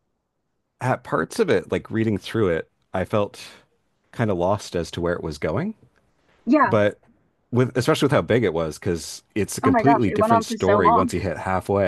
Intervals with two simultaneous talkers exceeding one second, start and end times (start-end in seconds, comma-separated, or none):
9.6-11.1